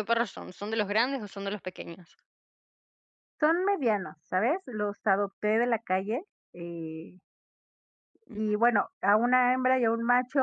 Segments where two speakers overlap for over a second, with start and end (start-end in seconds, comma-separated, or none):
none